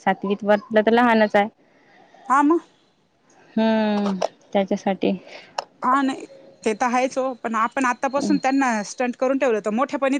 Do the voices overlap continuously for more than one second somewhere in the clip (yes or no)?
no